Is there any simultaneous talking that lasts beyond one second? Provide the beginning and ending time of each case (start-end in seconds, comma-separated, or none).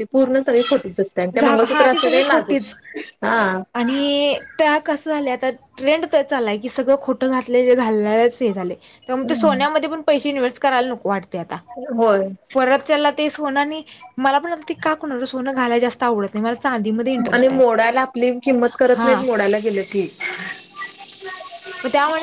1.4-2.7